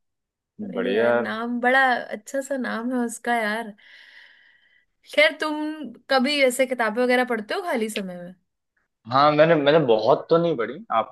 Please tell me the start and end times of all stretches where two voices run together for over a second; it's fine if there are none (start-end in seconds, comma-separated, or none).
none